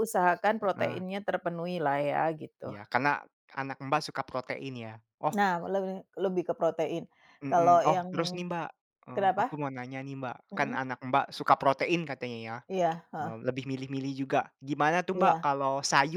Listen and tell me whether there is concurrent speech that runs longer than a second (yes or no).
no